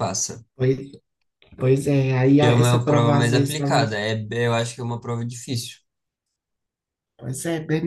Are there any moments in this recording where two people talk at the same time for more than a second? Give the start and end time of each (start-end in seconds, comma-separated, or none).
2.3-4.0